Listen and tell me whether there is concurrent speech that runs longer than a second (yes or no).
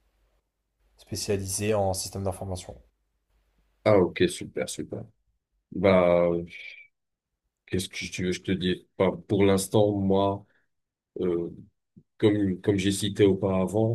no